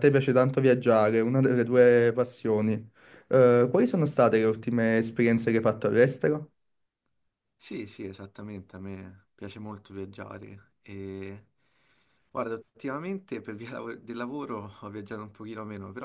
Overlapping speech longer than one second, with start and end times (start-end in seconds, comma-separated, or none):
none